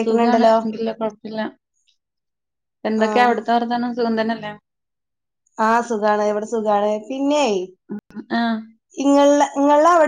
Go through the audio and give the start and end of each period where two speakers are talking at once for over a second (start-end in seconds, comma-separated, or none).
none